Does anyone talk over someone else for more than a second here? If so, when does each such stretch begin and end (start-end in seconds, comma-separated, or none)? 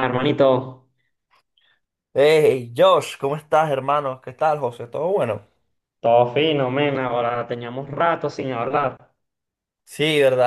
none